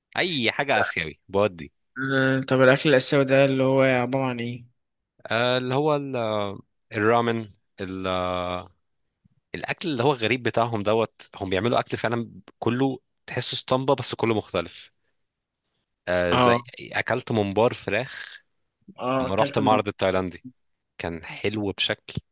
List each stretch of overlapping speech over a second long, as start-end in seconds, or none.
none